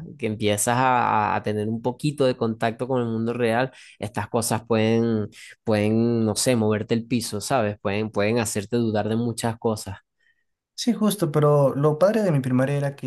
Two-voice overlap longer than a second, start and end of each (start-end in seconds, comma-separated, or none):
none